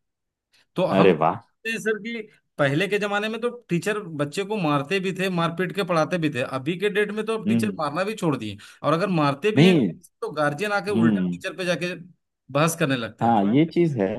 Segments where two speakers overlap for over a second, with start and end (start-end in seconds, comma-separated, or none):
none